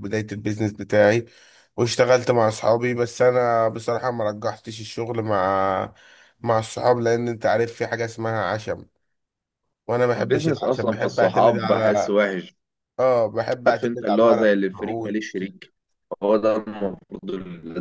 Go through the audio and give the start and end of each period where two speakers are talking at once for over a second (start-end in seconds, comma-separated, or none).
10.2-12.2, 13.7-15.2